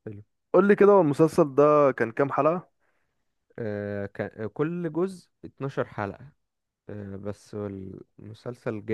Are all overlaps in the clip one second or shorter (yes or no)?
yes